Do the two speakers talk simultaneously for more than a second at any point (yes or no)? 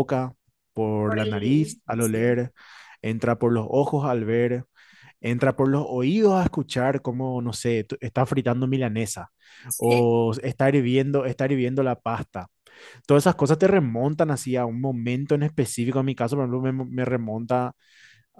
yes